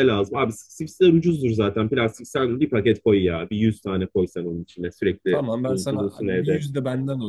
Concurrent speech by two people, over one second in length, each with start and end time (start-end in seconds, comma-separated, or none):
5.3-6.6